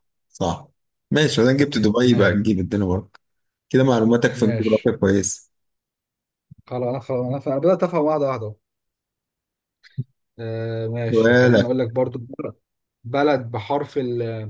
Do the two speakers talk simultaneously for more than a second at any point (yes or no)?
no